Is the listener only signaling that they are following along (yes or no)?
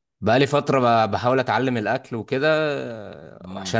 yes